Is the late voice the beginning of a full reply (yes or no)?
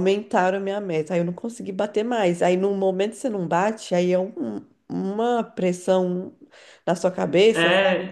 yes